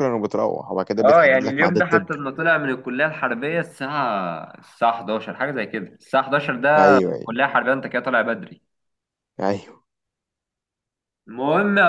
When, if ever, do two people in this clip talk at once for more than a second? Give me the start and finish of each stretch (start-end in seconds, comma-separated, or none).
1.0-2.2